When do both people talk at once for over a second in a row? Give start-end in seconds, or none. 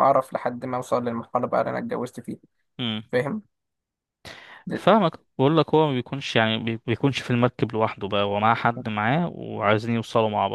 none